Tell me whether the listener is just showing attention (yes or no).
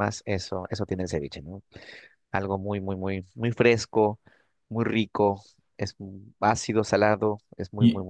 no